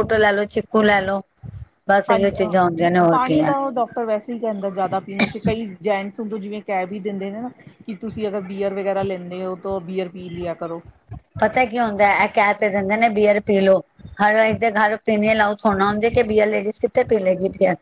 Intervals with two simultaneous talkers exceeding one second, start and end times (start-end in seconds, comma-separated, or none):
none